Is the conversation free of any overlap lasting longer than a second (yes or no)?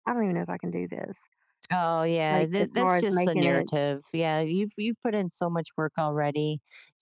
no